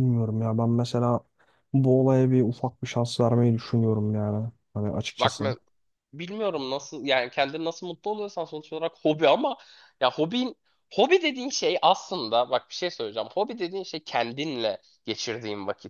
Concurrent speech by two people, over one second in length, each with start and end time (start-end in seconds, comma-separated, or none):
none